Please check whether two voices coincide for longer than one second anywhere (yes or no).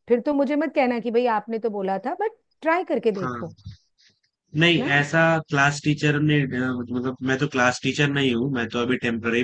no